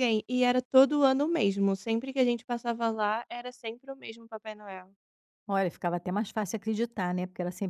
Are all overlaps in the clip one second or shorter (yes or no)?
yes